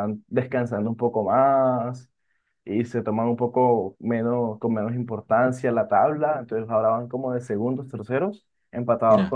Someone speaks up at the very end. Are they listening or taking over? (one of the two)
listening